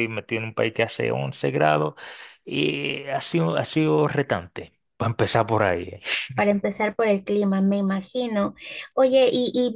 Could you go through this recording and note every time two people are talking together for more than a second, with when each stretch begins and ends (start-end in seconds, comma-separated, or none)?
none